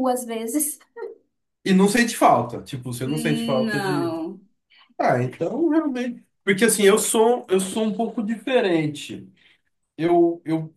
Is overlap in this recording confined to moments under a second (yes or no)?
yes